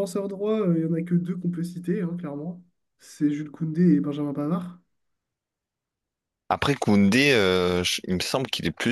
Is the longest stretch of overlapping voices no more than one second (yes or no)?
yes